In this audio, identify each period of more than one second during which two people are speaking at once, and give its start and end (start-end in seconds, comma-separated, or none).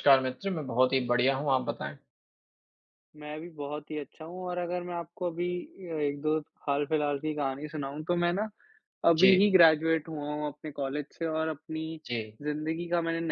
none